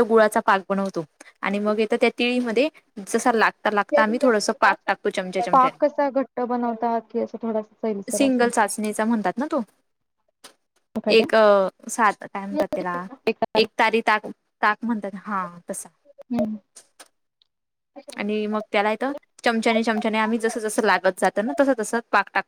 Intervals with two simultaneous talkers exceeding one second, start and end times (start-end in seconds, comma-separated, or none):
none